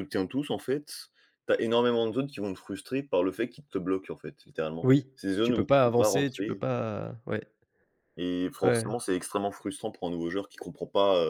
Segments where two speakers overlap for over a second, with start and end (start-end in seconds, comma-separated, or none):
4.8-6.6